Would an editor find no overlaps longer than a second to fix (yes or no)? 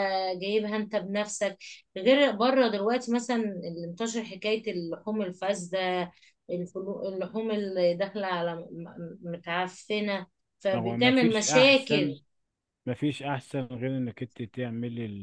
no